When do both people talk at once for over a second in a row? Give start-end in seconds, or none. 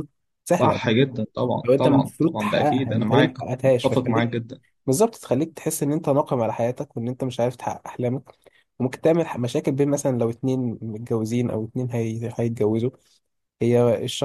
1.6-4.3